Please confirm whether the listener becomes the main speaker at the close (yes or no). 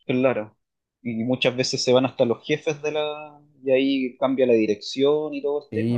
yes